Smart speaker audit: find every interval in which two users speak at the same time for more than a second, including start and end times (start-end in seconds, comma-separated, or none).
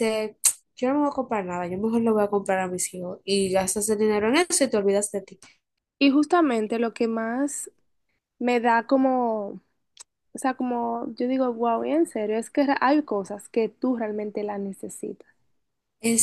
none